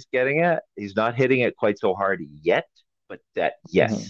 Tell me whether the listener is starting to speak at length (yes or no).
no